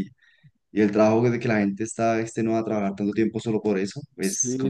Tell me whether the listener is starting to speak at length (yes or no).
yes